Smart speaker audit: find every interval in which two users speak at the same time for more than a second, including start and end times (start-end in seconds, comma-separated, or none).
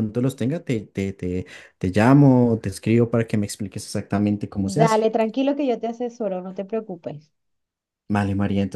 none